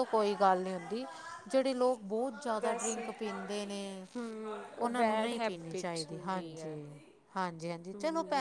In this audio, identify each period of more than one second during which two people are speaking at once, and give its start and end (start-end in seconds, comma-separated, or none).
4.8-6.8